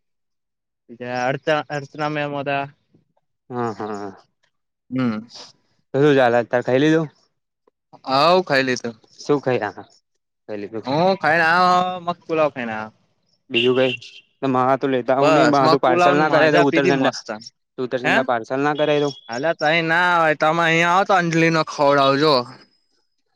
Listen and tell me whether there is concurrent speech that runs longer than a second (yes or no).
yes